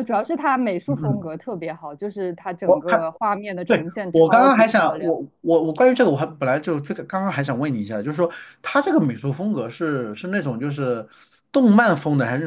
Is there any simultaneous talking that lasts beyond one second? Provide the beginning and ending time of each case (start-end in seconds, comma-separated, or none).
3.7-5.2